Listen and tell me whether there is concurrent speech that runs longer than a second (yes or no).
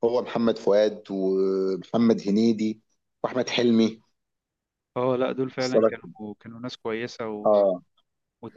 no